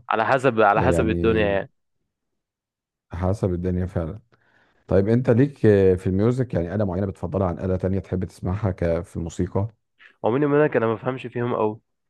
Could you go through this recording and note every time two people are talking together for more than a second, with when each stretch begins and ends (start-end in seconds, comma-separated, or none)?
none